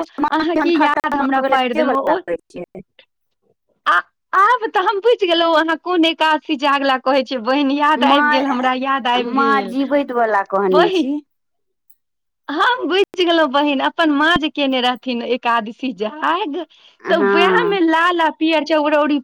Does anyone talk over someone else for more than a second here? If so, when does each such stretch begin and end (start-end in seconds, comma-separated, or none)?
0.6-2.2